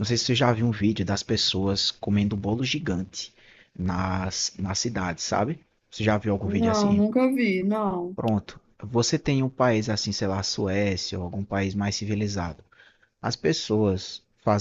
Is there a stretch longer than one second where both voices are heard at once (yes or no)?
no